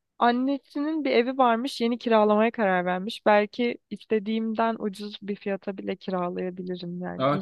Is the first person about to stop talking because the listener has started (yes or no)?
yes